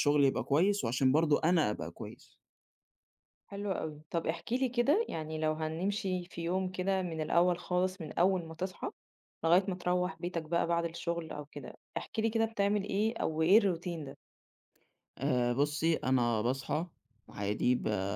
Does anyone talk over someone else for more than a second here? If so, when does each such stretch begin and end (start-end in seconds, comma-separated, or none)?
none